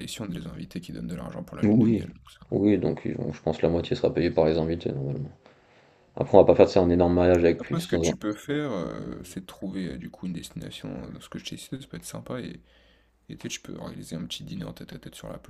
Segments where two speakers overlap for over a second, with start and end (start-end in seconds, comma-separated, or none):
none